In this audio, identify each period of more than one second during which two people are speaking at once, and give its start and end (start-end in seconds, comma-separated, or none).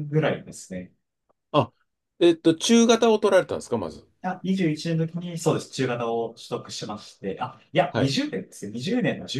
none